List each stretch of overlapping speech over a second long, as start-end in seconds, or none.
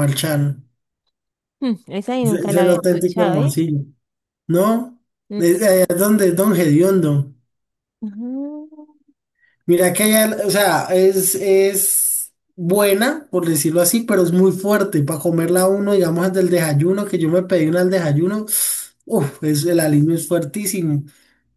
2.2-3.5